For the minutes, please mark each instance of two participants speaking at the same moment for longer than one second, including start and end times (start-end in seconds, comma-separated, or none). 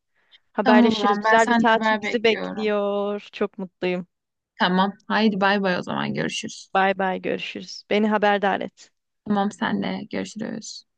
0.6-2.7